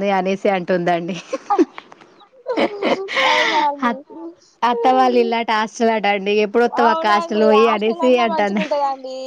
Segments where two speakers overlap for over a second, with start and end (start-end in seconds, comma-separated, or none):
6.8-8.6